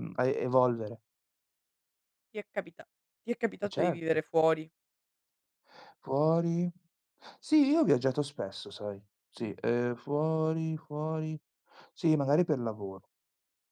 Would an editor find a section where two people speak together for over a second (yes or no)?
no